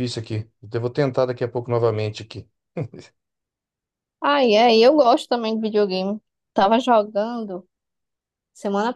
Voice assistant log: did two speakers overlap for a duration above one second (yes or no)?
no